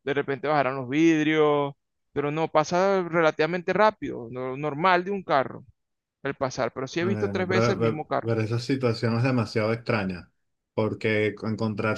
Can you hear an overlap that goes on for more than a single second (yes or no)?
yes